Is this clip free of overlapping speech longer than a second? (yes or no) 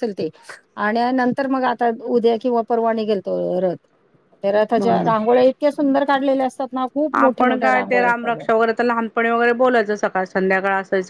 no